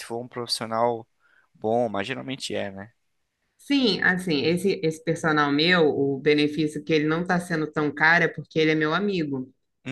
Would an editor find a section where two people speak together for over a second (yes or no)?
no